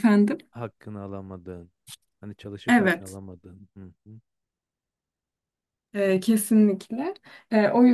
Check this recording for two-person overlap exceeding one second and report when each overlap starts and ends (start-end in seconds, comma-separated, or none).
none